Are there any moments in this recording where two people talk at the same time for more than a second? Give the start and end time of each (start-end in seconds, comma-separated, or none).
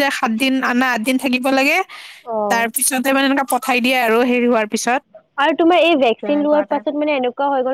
none